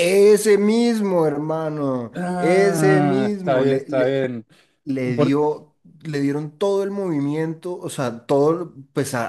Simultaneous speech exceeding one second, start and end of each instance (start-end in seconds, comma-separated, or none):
2.1-3.6